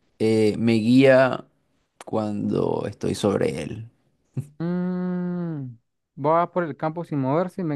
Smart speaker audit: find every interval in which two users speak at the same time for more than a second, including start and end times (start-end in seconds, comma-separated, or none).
none